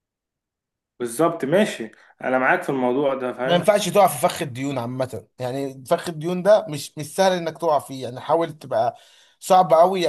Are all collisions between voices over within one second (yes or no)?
yes